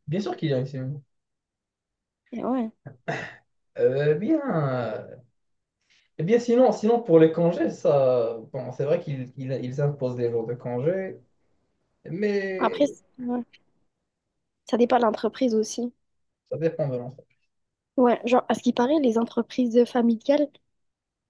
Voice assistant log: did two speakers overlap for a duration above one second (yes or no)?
no